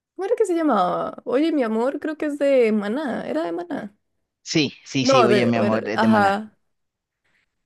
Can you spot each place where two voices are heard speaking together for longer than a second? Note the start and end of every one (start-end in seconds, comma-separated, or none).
5.0-6.4